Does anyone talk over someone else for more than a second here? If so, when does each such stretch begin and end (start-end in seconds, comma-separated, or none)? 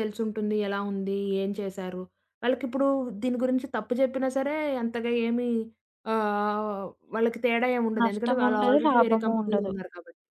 8.0-9.7